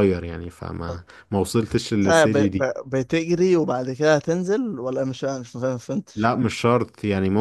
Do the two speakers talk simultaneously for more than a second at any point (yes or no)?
no